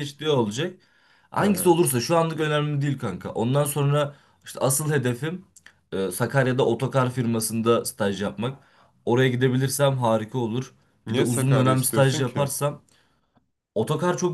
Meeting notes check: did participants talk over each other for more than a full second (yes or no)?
yes